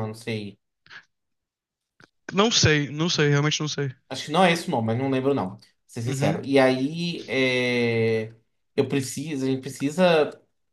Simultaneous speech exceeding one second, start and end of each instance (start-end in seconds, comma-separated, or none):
none